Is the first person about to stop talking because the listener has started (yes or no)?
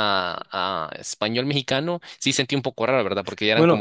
yes